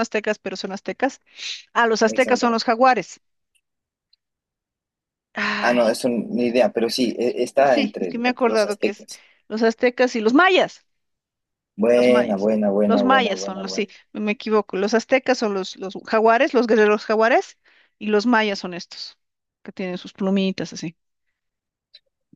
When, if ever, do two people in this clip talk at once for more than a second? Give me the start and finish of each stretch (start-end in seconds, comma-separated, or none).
7.7-9.1, 11.9-13.9